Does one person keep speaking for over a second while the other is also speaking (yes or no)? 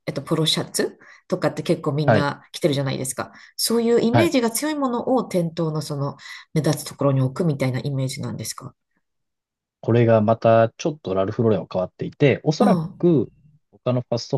no